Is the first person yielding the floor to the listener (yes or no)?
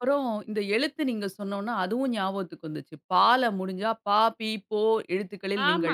yes